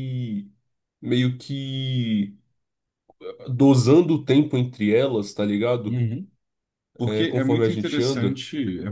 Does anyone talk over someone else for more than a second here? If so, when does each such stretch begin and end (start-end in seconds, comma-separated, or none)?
7.0-8.4